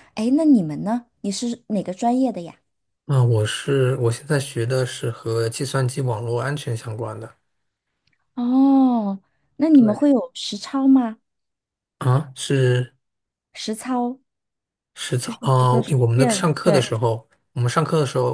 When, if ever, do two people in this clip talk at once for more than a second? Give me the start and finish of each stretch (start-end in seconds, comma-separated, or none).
15.2-16.9